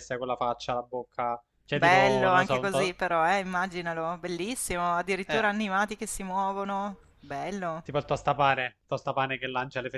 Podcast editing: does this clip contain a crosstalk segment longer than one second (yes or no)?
yes